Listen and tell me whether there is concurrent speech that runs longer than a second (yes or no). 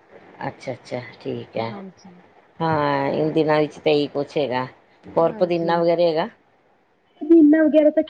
no